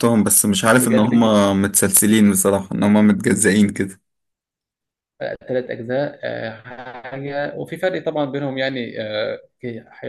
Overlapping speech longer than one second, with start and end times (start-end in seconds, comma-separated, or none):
none